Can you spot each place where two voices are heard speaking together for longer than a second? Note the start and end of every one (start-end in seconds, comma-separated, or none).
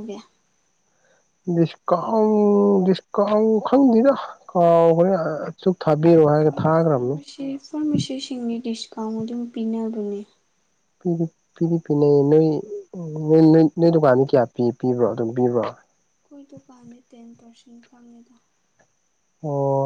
none